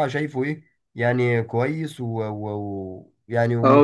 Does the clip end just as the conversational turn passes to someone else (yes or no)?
yes